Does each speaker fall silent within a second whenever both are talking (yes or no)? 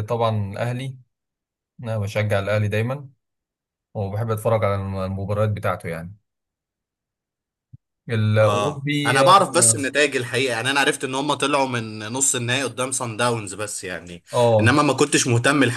no